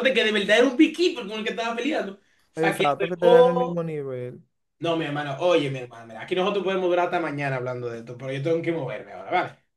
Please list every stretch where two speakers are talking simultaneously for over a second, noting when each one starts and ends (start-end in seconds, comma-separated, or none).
2.5-3.8